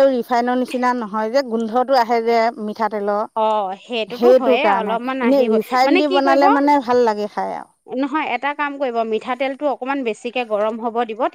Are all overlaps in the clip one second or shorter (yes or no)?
no